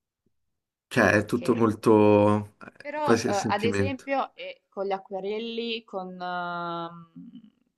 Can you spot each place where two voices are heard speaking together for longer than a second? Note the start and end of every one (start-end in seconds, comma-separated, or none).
2.8-4.1